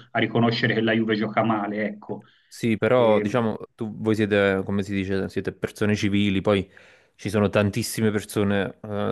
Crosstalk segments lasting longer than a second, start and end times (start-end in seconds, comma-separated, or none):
none